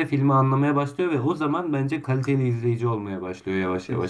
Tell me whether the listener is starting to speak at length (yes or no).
yes